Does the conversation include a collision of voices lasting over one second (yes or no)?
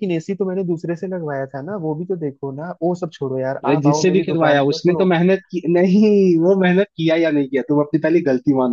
yes